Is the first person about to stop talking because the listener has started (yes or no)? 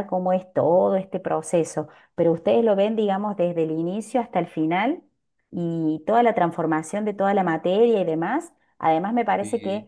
no